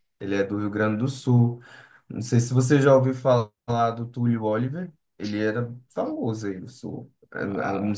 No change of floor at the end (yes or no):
yes